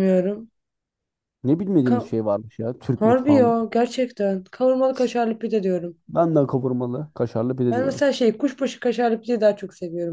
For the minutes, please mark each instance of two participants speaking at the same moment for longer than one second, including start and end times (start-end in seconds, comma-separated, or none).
none